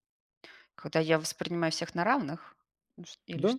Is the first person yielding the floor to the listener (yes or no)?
yes